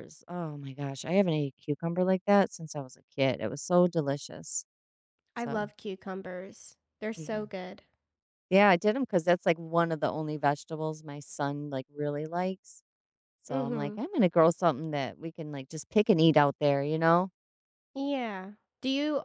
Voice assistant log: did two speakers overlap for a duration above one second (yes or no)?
no